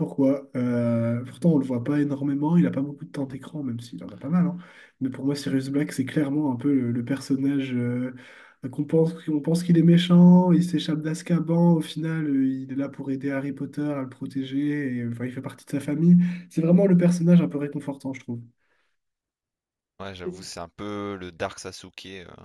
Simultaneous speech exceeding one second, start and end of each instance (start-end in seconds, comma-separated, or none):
none